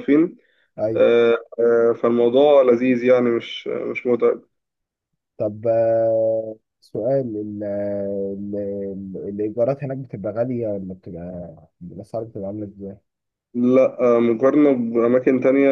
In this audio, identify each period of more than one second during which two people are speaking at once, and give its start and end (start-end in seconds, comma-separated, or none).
none